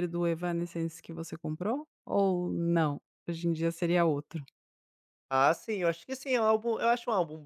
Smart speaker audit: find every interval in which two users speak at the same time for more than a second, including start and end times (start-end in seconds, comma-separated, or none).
none